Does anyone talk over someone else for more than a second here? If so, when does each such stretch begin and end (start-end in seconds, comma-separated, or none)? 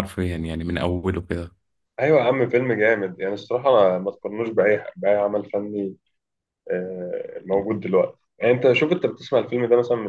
none